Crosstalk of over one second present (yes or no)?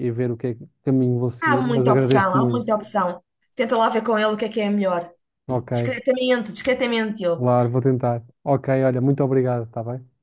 yes